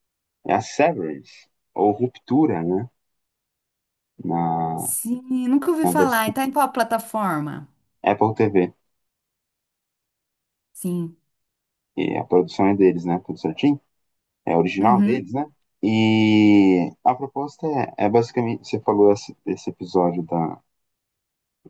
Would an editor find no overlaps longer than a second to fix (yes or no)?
yes